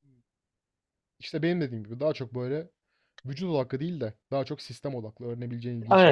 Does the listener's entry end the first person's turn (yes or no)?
yes